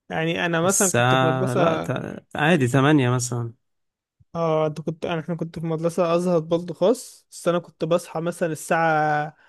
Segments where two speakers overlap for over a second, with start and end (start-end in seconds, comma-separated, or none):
0.6-1.9